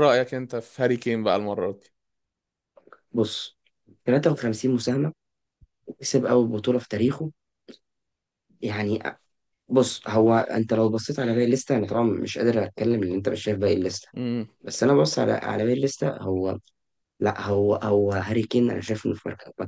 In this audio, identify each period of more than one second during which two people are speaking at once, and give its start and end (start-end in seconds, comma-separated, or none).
none